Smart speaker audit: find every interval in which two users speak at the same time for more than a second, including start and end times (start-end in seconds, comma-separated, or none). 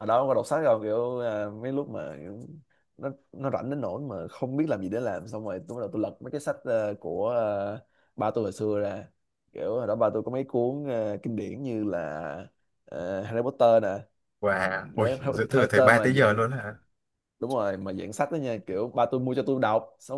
14.9-16.4